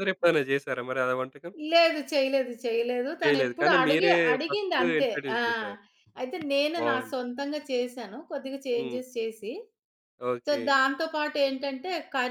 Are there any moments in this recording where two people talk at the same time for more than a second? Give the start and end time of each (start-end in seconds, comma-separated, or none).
3.2-5.4